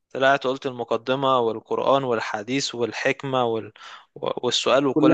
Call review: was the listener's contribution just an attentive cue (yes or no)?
yes